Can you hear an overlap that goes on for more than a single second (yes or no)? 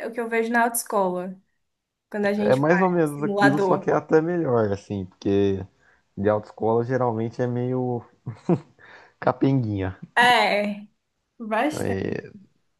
yes